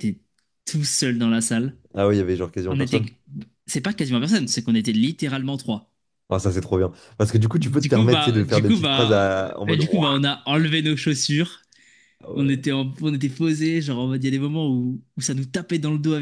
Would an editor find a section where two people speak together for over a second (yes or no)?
yes